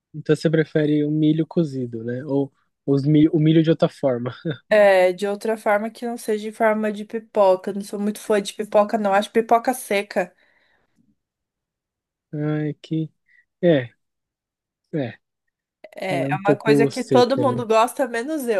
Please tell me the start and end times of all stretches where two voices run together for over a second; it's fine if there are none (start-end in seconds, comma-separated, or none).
16.1-17.6